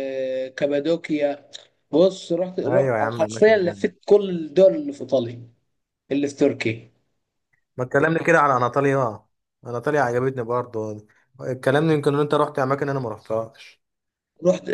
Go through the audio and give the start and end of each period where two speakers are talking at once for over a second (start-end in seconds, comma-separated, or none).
2.7-3.9